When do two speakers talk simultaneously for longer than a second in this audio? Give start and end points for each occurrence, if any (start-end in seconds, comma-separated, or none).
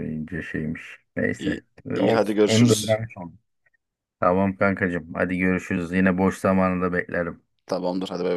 1.4-3.0